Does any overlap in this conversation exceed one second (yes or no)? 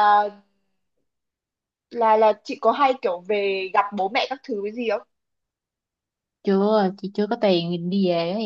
no